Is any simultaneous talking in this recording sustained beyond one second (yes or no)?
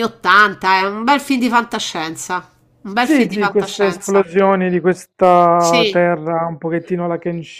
yes